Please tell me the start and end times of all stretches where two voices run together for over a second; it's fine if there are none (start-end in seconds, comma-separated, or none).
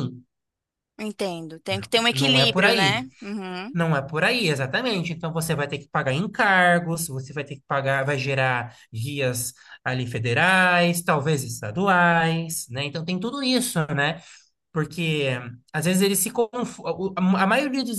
1.7-3.0